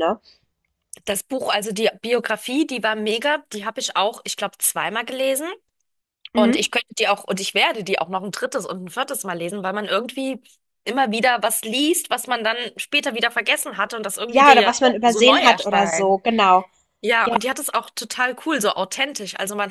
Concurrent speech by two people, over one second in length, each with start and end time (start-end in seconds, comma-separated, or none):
14.3-16.1